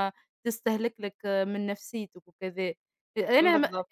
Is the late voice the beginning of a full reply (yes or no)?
no